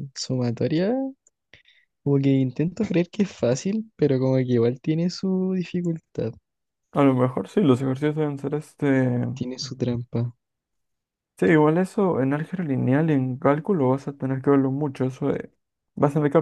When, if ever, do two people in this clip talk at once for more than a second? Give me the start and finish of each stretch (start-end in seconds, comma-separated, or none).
none